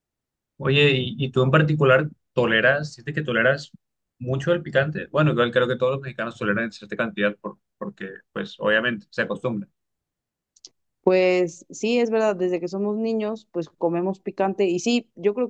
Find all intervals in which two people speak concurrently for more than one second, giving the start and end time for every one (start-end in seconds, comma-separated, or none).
none